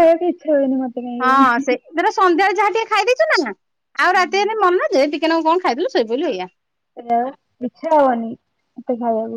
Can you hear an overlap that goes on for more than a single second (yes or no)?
no